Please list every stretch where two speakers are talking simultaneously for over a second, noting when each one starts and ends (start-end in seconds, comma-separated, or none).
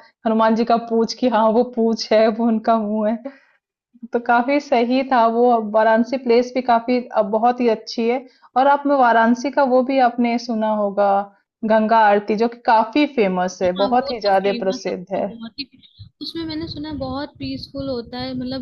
13.6-15.3